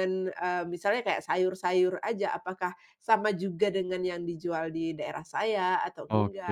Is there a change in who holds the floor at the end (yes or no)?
yes